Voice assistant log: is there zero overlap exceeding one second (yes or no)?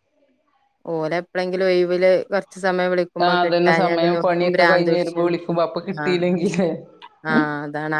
no